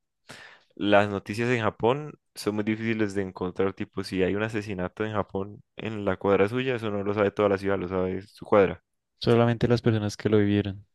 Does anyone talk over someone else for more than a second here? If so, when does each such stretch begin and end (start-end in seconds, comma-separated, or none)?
none